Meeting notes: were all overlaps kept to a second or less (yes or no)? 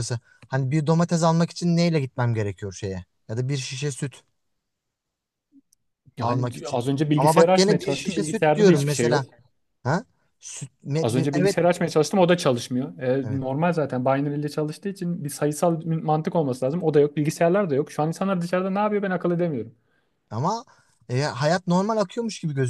no